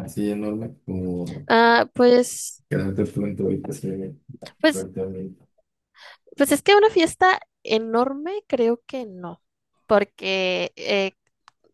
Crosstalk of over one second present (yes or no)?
no